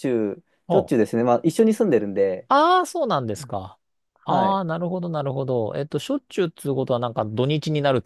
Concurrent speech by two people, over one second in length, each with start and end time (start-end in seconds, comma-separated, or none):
none